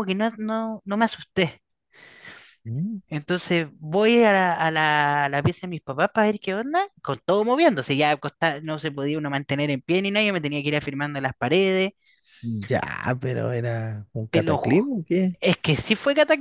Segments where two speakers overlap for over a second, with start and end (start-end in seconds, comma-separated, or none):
none